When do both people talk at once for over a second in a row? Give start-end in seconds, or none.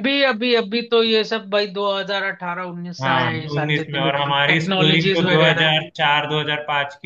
3.0-5.8